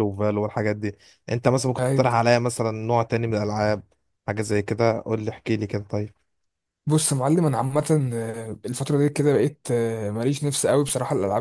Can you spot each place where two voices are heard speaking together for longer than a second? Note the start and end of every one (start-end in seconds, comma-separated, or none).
none